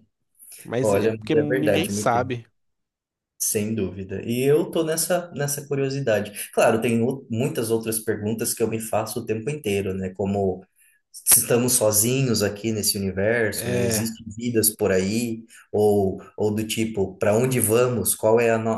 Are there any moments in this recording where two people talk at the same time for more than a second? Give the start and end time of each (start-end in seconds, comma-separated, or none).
0.8-2.3